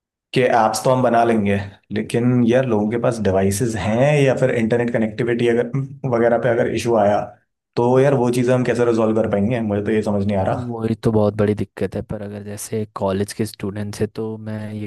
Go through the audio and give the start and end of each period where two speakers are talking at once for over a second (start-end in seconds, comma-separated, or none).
none